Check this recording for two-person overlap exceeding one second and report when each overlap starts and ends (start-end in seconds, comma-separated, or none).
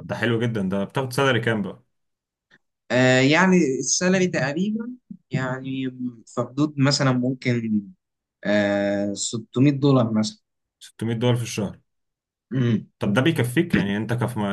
none